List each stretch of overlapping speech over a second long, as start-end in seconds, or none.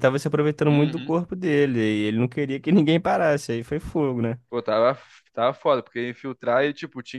none